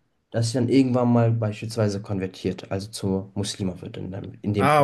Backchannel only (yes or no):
no